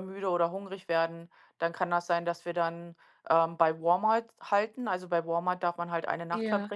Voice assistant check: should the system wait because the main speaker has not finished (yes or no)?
yes